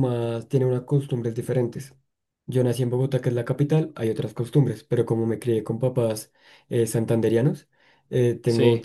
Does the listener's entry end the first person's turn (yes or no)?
no